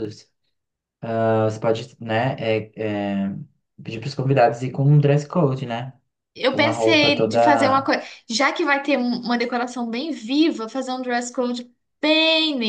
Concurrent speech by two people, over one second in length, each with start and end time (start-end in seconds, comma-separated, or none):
6.5-7.9